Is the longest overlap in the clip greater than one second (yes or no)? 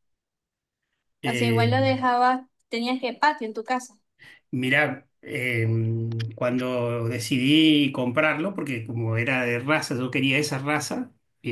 no